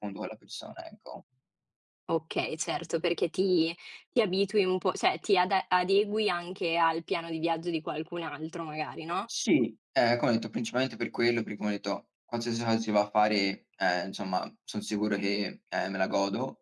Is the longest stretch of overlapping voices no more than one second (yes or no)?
yes